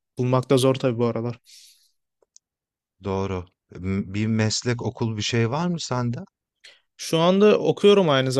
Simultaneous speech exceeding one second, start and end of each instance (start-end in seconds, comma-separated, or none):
none